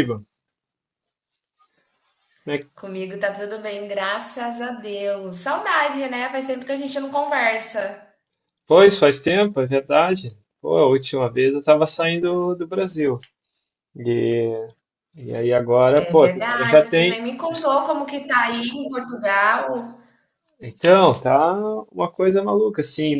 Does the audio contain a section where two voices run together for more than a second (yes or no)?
yes